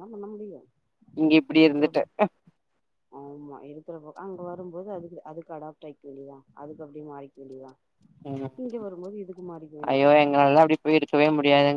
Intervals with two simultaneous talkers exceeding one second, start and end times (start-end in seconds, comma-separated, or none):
none